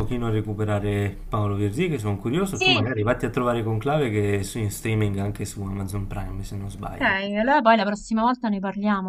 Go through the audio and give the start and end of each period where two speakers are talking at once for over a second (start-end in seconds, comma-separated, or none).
none